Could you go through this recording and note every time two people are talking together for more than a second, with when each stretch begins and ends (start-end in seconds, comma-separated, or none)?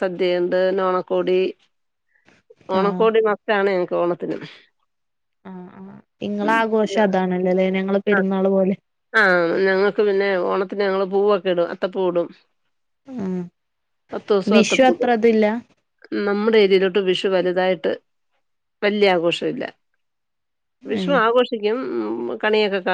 none